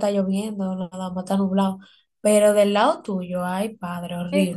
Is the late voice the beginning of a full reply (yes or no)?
yes